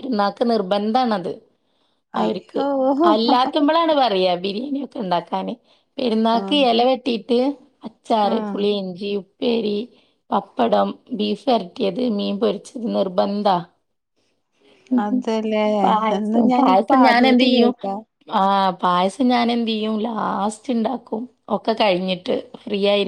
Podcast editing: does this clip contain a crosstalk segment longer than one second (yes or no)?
yes